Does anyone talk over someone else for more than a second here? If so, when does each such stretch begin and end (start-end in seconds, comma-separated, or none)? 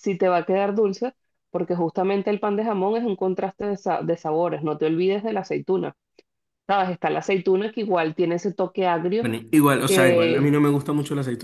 none